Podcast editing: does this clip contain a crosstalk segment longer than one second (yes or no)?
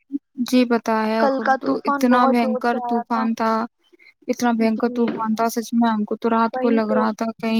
yes